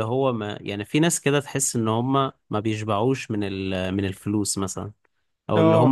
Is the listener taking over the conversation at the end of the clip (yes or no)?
no